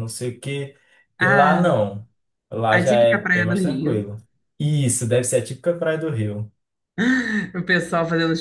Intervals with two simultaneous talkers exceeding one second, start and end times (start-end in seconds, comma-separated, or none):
2.7-4.1